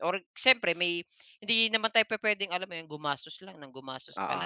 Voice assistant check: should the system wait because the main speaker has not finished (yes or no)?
no